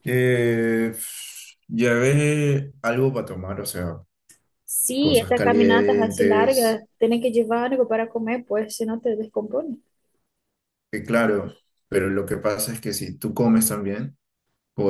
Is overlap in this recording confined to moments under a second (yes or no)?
no